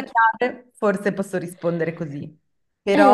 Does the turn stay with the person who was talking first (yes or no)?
yes